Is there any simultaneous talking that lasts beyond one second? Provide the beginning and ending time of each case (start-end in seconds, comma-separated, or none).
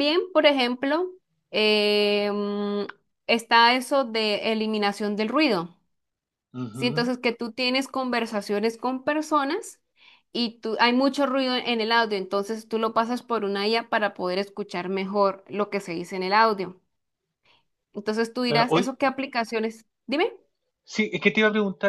none